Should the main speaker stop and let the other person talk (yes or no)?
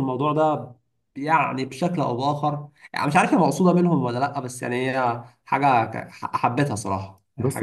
yes